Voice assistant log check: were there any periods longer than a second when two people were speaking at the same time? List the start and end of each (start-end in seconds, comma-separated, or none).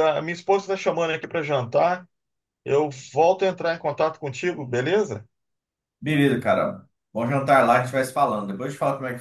none